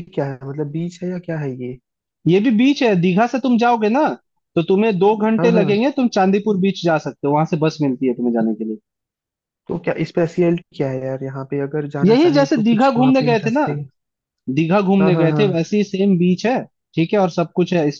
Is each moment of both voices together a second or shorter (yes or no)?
no